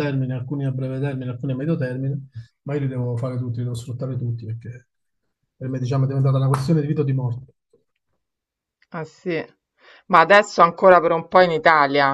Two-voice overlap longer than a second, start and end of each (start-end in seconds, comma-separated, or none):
none